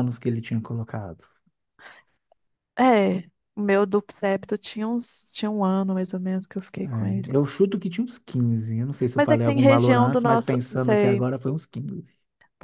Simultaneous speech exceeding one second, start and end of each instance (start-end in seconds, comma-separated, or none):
9.1-11.2